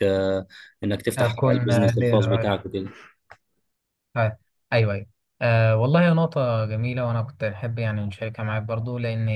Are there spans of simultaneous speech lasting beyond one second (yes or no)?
yes